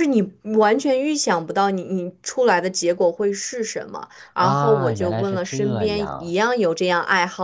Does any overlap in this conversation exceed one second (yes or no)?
yes